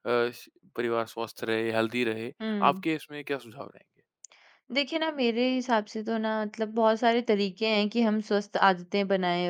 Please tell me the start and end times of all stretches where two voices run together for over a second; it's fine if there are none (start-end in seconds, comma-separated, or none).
none